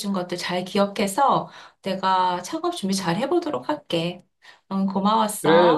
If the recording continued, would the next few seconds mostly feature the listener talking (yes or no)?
yes